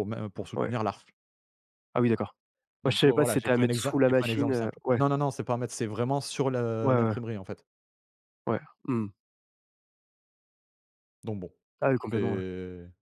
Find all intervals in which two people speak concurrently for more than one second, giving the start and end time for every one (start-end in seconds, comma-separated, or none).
2.8-5.0